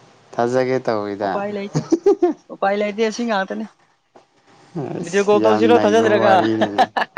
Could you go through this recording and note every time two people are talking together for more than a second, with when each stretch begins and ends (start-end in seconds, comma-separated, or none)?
5.0-6.3